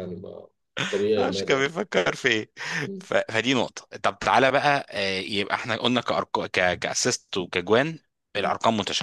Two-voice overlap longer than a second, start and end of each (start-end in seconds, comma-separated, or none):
none